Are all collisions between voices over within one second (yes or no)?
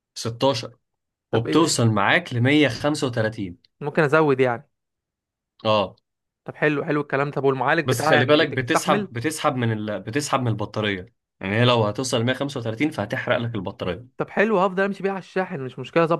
no